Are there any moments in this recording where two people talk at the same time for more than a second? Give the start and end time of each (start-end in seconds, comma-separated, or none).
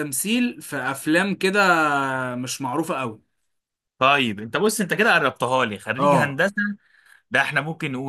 none